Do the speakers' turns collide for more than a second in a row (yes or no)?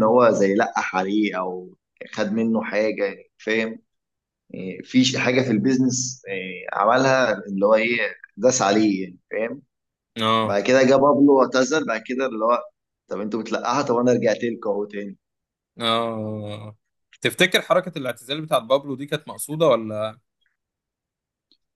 no